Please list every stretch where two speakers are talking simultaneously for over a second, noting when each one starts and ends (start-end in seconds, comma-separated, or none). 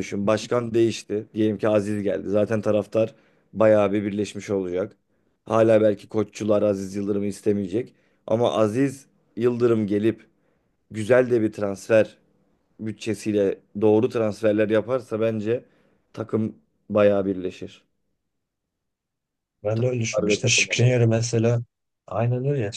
19.7-20.9